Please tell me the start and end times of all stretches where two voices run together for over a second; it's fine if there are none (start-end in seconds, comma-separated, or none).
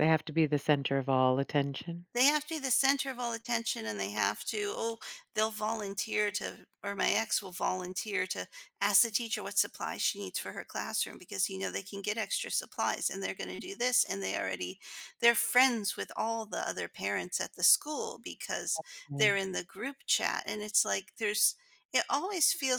none